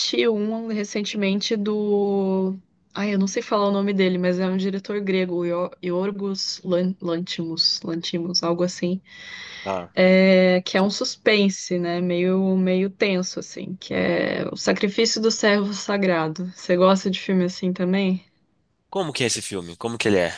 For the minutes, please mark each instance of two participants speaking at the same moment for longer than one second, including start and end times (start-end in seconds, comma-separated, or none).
none